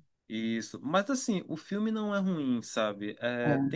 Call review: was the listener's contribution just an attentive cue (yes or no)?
yes